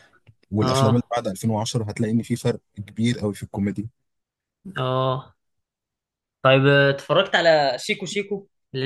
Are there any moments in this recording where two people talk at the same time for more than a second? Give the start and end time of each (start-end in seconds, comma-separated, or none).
none